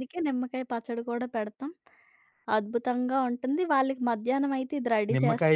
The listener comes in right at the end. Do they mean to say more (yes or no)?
yes